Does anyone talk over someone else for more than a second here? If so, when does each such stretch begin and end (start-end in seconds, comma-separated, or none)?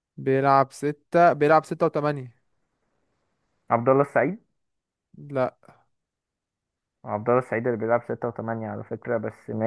none